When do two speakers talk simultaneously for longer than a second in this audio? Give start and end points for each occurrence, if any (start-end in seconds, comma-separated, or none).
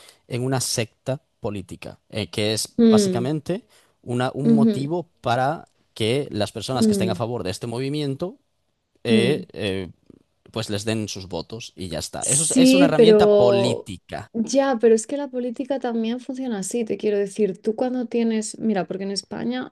12.2-13.9